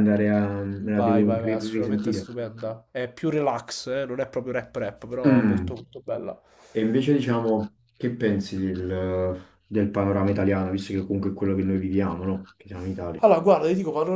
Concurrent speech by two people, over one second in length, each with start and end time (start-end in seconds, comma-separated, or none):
0.9-2.2